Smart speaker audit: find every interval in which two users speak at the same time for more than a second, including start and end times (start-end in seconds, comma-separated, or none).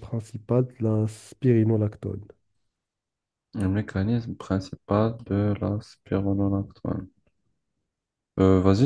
none